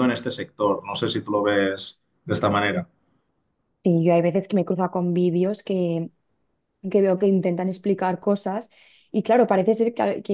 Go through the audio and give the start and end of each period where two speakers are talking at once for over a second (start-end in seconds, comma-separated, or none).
none